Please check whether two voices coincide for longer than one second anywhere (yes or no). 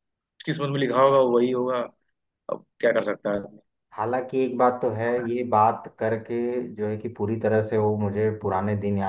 no